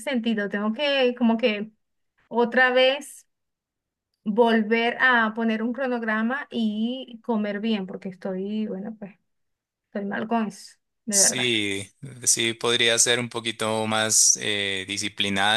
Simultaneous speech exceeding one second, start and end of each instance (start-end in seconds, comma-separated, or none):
none